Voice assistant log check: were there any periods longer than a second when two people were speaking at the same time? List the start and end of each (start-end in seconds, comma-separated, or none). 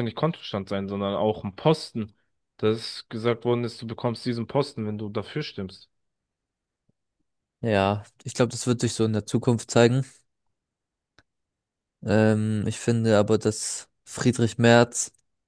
none